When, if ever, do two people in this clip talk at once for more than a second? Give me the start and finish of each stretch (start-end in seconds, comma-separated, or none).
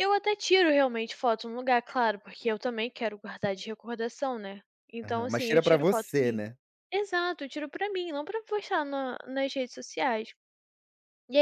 5.0-6.4